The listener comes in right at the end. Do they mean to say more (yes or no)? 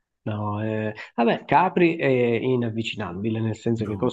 no